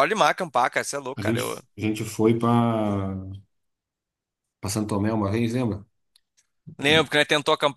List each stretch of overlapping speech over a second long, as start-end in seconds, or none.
none